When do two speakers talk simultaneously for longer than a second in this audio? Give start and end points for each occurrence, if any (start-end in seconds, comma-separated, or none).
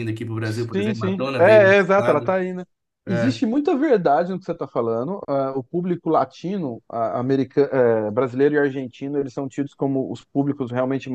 0.7-2.4